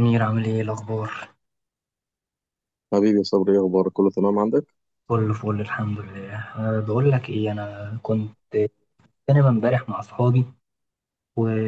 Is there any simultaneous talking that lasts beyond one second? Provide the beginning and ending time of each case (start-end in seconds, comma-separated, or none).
none